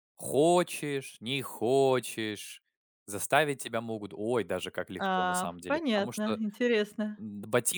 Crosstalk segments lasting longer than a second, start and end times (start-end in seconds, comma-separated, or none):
5.0-6.4